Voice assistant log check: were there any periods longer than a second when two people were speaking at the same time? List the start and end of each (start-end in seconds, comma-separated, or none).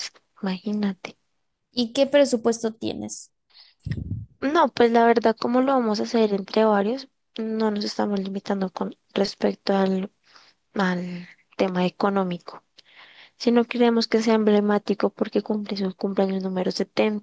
none